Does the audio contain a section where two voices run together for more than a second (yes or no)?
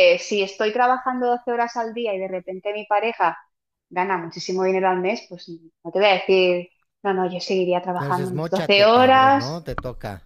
yes